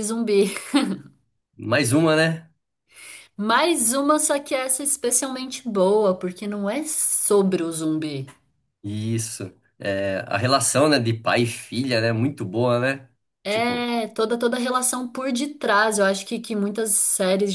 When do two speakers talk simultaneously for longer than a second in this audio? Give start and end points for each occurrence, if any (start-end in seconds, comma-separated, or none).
none